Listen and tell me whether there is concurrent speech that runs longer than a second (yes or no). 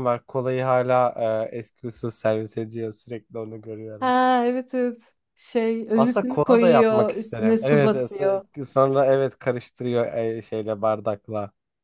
yes